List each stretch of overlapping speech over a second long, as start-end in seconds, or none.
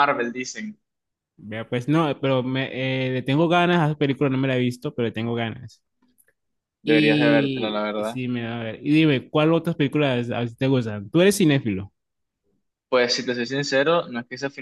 6.8-8.2